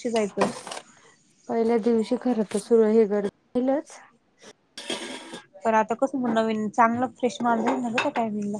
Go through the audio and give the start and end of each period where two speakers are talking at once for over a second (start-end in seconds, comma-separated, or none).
none